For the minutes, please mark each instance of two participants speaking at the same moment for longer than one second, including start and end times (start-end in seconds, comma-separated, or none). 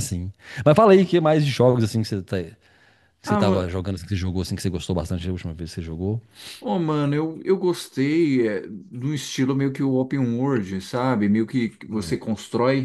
none